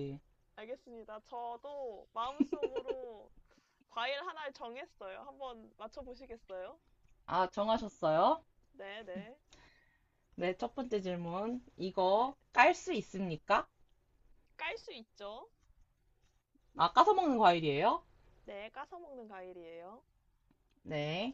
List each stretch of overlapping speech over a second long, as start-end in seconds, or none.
none